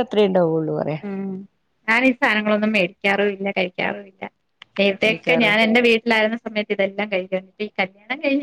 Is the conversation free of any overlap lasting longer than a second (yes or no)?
yes